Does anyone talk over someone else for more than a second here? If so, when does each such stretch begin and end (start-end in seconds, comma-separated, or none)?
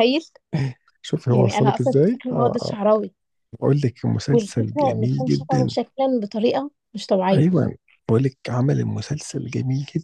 1.3-2.8, 4.3-5.7